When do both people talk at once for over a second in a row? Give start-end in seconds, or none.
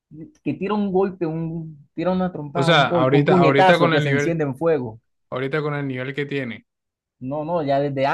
2.5-4.4